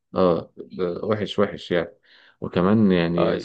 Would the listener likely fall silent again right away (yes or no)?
yes